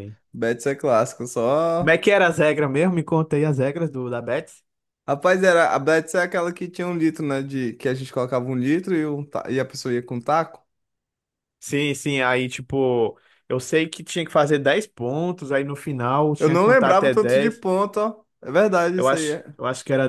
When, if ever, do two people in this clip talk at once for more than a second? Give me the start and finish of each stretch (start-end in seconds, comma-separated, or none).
16.4-17.6